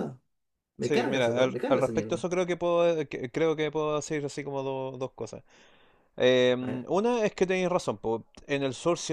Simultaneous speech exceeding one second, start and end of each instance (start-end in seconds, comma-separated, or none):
0.8-2.2